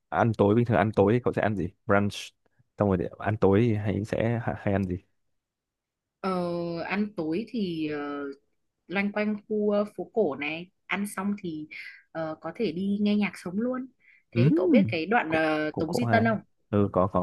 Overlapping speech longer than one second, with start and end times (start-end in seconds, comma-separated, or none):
14.3-16.3